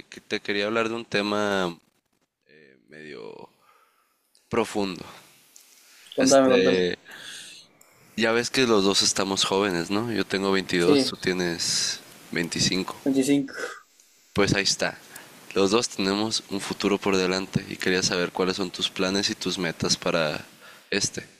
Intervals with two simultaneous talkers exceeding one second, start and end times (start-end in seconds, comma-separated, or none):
none